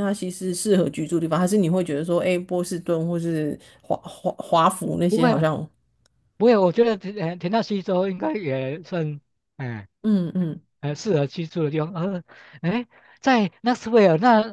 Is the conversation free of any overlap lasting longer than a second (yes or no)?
yes